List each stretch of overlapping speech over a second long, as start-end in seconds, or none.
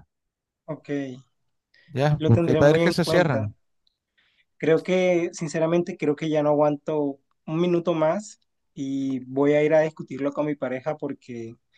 2.2-3.5